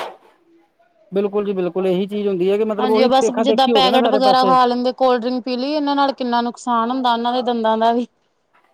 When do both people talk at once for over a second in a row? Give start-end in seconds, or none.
2.8-4.5